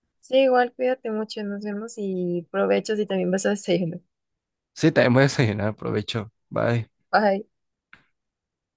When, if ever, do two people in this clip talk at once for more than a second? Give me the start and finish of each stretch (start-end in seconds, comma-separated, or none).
none